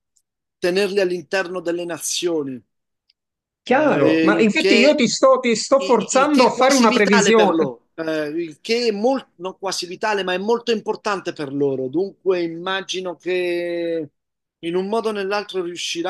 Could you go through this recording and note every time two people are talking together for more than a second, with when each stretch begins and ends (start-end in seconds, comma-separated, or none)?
3.6-5.0, 5.8-7.7